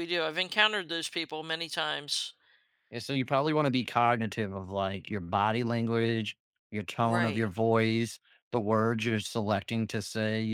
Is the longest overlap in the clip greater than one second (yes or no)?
no